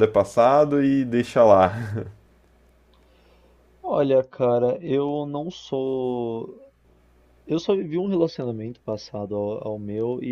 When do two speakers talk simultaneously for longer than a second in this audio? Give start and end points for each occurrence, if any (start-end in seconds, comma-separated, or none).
none